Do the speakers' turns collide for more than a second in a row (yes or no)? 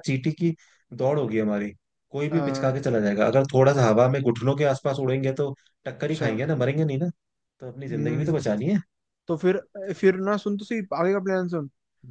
no